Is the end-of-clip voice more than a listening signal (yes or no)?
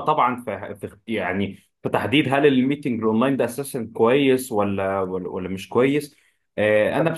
no